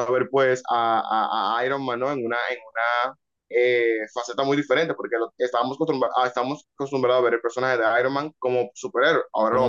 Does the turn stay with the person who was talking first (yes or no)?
yes